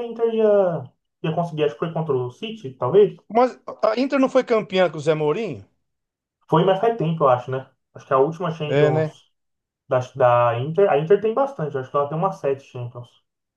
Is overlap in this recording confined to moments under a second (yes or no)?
yes